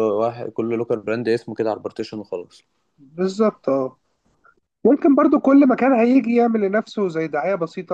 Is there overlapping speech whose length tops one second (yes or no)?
no